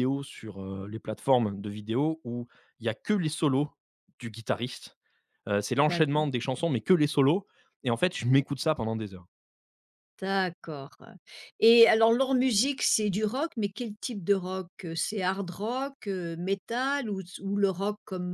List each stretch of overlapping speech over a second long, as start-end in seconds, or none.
none